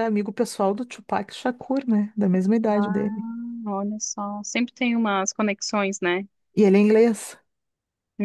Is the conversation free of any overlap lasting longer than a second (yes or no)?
yes